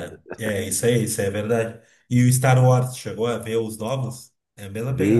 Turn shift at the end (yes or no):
yes